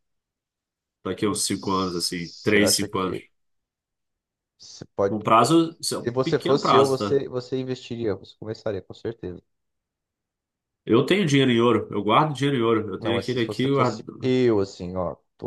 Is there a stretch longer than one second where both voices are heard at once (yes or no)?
yes